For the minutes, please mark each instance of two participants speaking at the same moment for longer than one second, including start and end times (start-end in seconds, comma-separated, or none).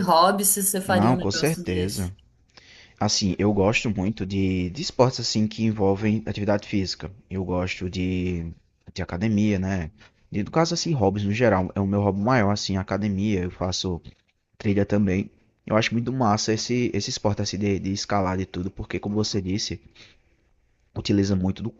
0.8-2.1